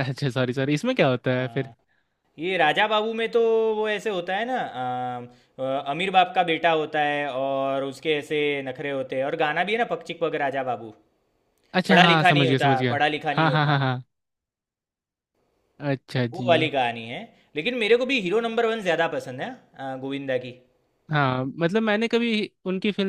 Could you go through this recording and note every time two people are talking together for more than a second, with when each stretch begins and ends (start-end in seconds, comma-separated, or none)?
11.9-13.8